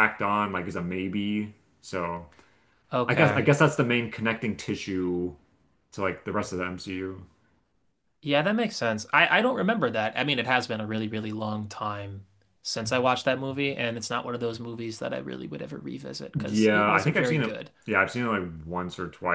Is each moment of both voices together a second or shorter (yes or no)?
no